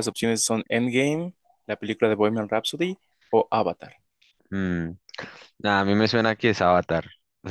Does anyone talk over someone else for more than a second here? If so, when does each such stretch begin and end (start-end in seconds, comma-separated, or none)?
none